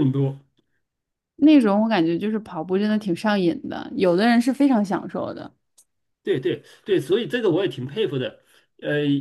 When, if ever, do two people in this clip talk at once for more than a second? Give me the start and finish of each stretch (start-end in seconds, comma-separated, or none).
none